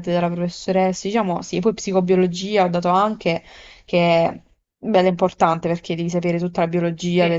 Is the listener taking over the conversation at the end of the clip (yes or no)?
no